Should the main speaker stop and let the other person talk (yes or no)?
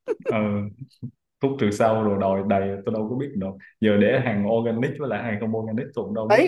yes